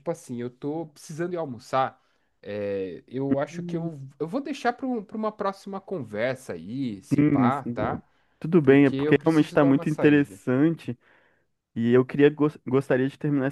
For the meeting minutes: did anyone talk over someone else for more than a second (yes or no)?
yes